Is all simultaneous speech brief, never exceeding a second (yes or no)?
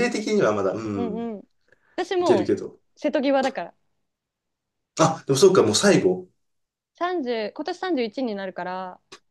yes